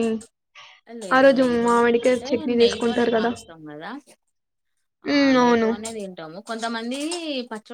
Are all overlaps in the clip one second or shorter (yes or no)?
no